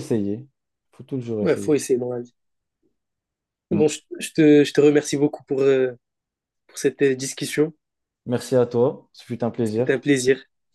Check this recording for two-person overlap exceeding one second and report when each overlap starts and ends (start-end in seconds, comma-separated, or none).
none